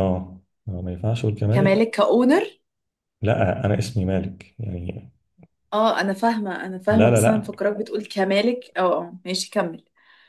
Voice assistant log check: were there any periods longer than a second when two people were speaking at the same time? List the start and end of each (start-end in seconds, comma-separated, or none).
none